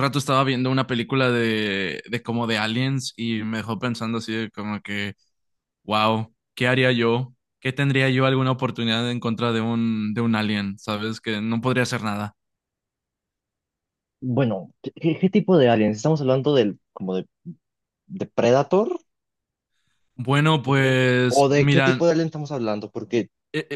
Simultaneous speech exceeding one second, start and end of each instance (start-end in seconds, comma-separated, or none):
20.6-22.0